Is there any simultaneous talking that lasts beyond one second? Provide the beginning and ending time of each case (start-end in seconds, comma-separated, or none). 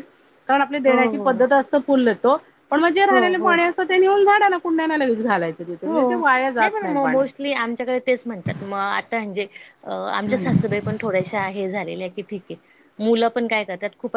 none